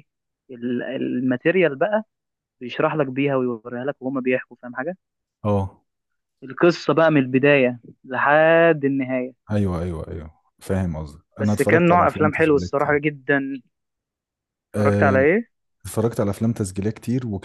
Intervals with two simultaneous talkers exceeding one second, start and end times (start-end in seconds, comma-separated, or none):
11.4-13.0